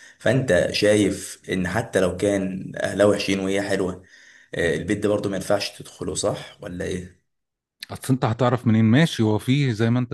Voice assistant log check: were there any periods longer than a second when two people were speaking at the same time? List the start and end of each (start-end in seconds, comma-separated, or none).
none